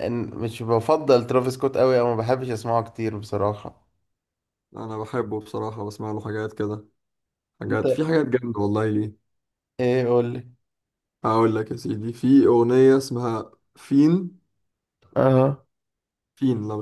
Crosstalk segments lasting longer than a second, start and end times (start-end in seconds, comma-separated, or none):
none